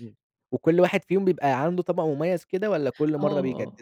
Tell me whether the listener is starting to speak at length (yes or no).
yes